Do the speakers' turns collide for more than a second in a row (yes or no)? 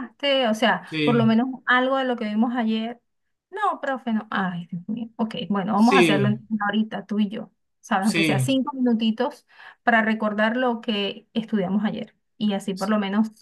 no